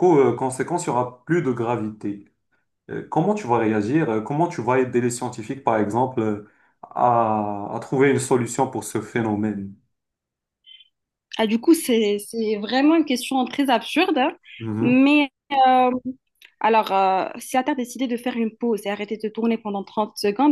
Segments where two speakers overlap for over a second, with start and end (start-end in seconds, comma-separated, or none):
none